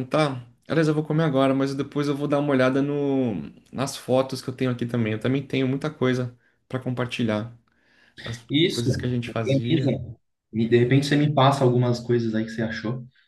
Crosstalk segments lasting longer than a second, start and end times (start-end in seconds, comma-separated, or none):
8.5-9.9